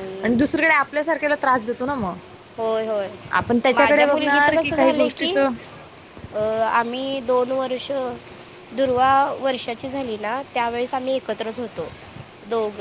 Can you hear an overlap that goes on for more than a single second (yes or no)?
yes